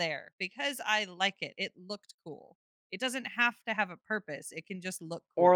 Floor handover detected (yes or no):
yes